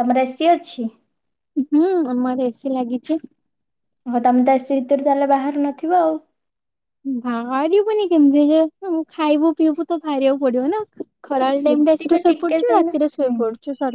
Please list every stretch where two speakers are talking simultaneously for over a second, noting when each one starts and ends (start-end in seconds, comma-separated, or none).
11.4-13.4